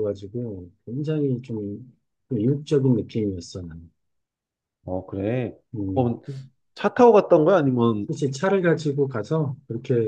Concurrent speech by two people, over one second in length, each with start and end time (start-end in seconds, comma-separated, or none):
none